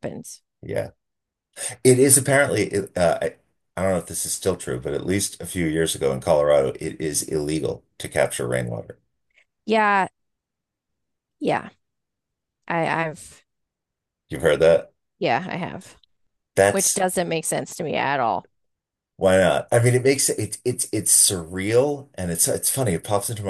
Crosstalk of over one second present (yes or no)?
no